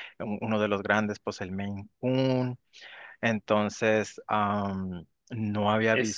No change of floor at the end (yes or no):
no